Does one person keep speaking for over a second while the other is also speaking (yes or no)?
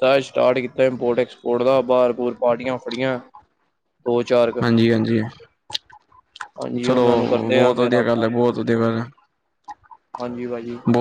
yes